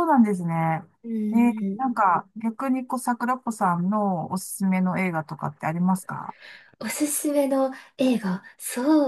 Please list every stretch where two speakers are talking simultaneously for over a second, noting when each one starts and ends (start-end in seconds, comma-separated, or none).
none